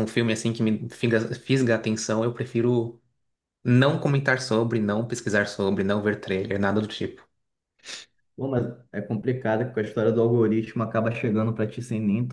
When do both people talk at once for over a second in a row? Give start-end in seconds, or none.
none